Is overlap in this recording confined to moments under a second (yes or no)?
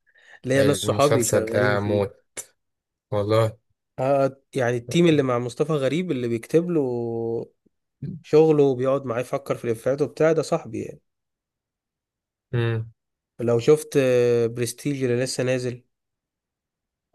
no